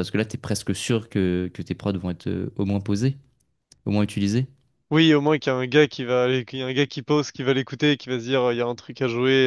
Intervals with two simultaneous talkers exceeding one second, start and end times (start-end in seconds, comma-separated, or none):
none